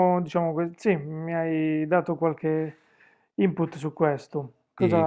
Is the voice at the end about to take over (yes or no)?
yes